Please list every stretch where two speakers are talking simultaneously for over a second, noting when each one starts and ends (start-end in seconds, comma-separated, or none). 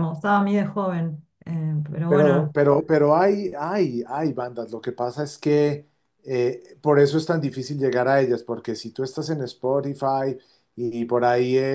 none